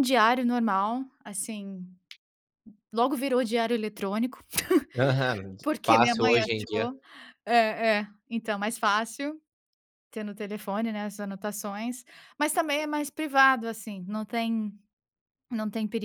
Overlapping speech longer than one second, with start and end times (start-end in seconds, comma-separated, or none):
5.6-6.9